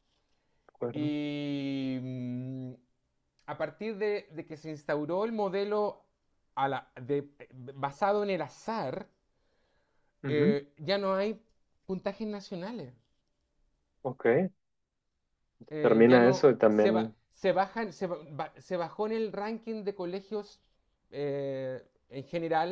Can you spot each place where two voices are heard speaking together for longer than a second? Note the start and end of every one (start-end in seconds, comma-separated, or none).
15.8-17.1